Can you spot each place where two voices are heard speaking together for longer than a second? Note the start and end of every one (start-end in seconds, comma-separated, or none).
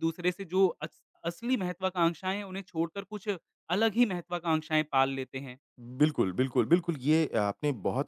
none